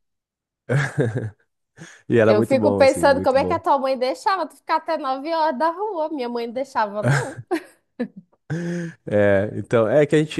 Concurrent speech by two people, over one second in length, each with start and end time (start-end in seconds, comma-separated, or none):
2.3-3.6